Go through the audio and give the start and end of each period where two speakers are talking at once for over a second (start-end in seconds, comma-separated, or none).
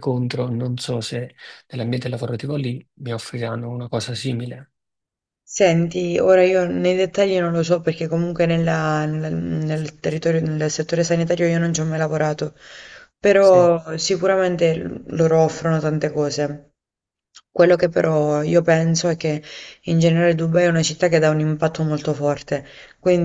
none